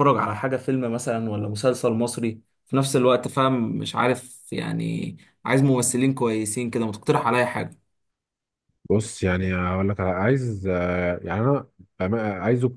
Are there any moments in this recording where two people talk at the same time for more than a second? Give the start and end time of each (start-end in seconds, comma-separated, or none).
none